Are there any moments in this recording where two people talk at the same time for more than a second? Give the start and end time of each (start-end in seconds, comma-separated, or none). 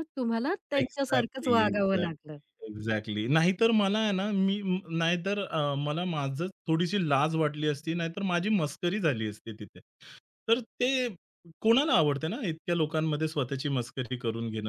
0.8-2.4